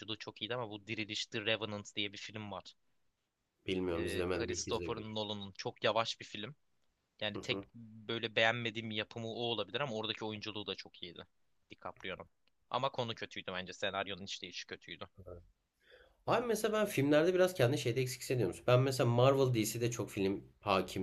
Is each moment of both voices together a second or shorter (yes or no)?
no